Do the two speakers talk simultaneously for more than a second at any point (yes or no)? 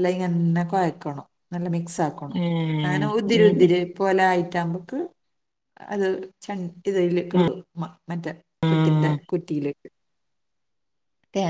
yes